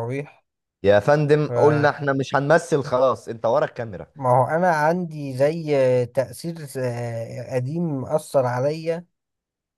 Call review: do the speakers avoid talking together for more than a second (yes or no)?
yes